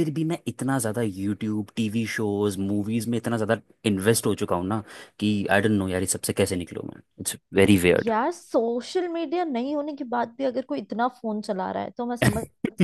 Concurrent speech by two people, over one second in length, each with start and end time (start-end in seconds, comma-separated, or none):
none